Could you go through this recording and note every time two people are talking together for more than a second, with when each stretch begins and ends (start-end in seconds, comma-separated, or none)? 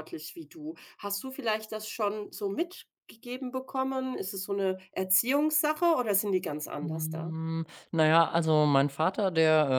none